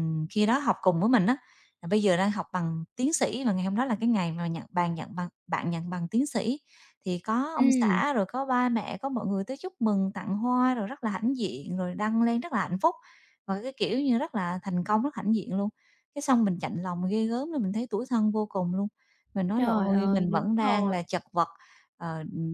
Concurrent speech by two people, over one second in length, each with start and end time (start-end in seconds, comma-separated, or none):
19.5-21.0